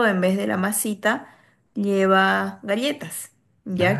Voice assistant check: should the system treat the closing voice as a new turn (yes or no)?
no